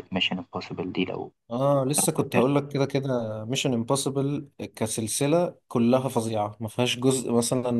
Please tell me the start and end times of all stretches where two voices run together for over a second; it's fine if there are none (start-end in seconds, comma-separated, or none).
none